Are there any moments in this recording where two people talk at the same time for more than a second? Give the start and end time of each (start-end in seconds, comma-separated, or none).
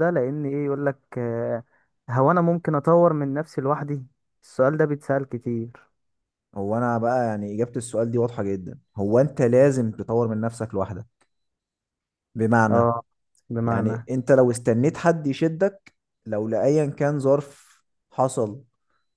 none